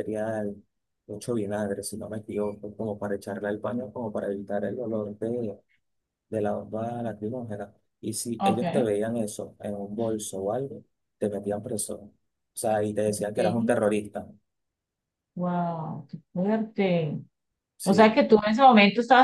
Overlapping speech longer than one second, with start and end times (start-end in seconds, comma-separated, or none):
none